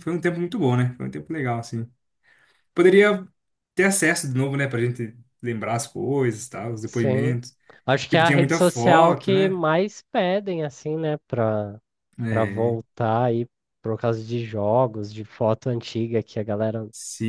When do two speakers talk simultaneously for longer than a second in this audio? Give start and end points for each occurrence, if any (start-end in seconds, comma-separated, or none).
8.1-9.6